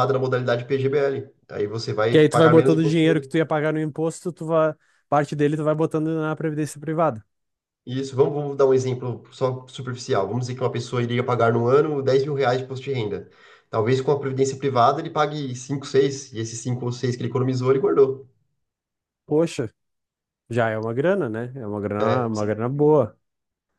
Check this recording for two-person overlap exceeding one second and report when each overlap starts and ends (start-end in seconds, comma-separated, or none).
2.1-3.3